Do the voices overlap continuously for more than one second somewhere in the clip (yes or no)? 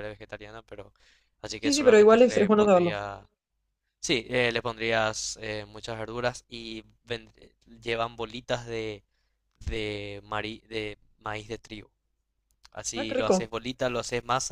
yes